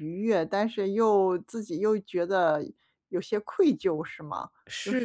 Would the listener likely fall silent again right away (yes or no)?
no